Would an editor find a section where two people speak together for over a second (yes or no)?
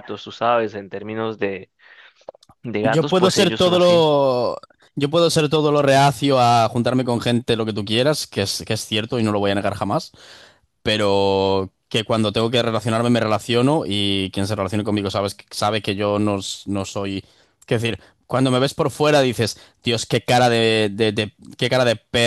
yes